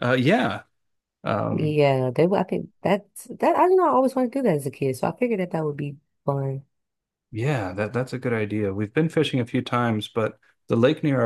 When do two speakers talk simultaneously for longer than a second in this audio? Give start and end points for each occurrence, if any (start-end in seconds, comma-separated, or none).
none